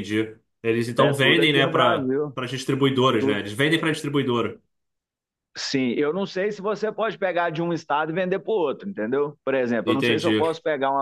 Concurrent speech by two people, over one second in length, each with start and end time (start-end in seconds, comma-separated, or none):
1.0-2.4